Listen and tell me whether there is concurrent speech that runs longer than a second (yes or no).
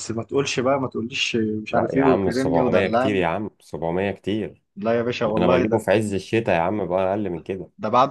yes